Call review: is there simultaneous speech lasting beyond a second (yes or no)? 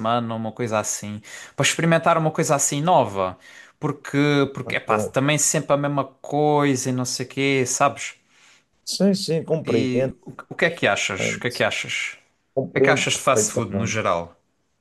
yes